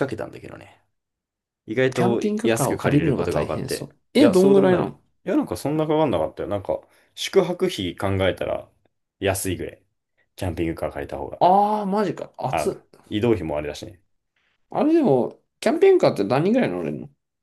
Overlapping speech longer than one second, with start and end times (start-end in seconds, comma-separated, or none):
1.9-4.9